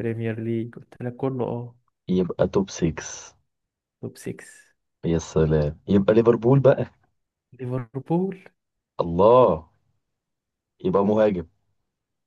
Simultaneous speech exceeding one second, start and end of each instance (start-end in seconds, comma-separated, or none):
none